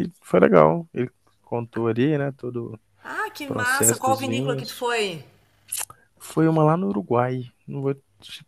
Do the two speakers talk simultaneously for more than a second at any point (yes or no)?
yes